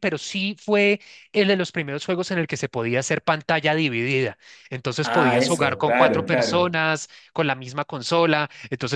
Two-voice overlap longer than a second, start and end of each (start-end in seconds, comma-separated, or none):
5.0-6.8